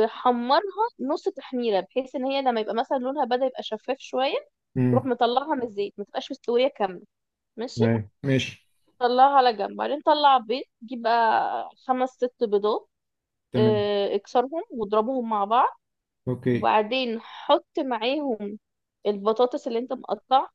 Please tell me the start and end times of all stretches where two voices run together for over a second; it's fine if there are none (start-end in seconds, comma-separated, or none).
none